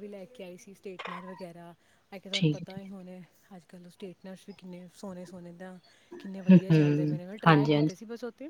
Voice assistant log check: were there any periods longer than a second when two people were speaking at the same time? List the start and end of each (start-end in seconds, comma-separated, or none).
6.3-7.9